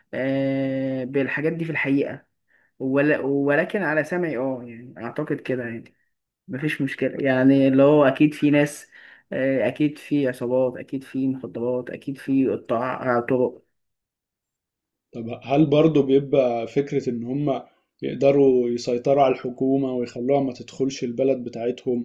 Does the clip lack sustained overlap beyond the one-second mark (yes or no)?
yes